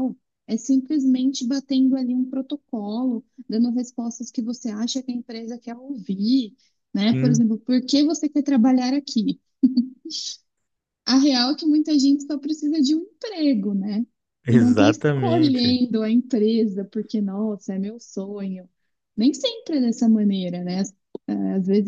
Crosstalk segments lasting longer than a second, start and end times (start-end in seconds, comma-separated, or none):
14.5-15.8